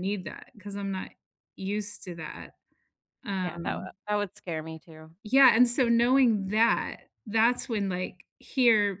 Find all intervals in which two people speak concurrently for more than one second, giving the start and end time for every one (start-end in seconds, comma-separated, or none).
none